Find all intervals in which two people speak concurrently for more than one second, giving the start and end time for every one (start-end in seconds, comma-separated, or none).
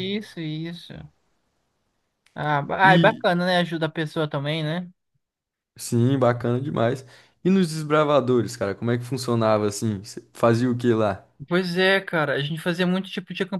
none